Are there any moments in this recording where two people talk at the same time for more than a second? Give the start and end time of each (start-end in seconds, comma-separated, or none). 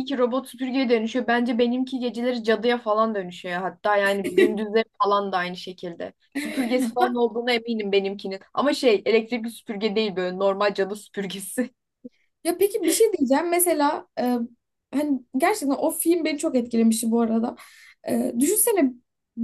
none